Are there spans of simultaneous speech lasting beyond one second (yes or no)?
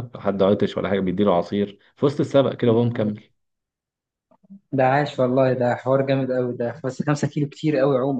no